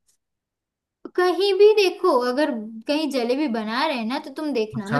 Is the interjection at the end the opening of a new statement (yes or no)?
no